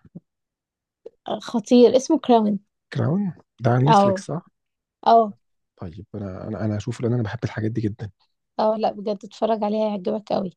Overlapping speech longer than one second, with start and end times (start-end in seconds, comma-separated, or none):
none